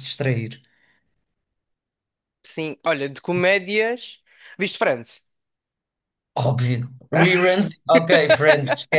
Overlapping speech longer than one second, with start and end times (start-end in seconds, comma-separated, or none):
none